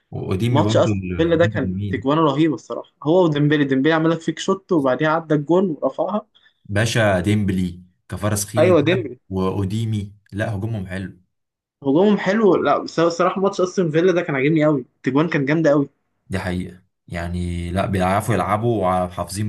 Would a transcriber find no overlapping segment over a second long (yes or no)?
no